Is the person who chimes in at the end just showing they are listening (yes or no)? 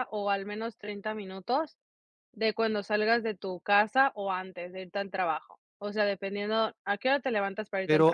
no